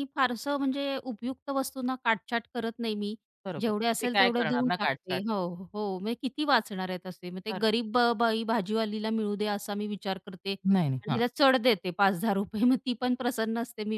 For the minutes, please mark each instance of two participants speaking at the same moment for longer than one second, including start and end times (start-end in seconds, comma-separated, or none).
3.6-5.2